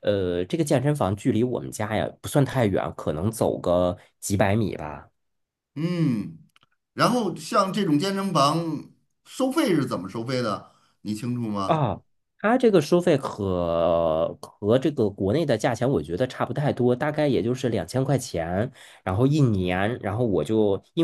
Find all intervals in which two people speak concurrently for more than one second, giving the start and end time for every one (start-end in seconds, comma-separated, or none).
none